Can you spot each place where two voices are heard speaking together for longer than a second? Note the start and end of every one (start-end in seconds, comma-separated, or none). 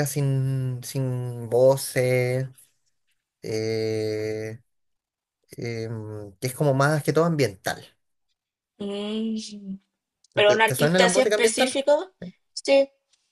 10.5-11.8